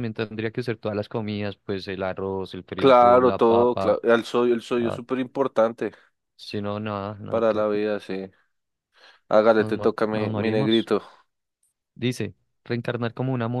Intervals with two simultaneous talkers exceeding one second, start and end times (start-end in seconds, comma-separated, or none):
2.8-4.0, 9.6-10.9